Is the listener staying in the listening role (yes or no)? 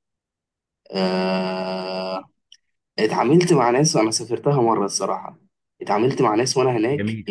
yes